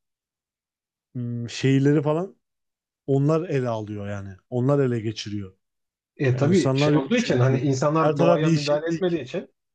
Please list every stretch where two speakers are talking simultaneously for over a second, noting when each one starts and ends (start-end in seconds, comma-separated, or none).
6.3-9.2